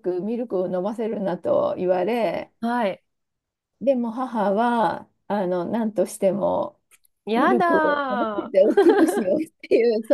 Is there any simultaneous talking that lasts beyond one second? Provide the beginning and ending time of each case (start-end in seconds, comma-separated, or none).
7.3-8.9